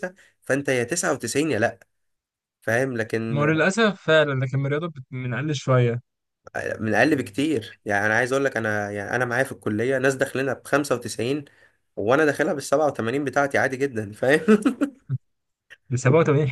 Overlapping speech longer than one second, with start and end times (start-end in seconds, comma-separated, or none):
none